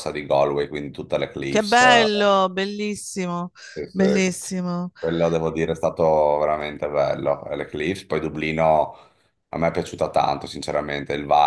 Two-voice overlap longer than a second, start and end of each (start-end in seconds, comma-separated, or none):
none